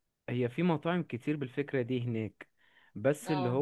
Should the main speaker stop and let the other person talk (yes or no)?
no